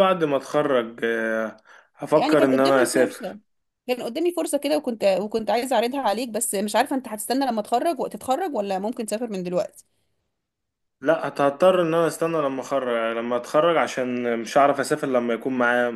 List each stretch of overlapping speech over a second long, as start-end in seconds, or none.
2.1-3.4